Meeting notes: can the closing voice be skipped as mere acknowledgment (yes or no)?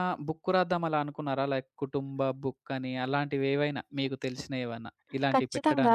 no